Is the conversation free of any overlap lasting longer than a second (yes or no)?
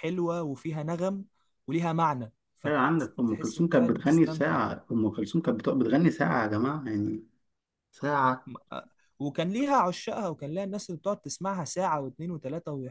no